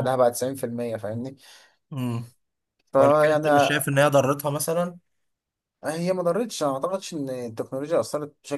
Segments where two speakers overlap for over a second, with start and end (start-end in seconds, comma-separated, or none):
none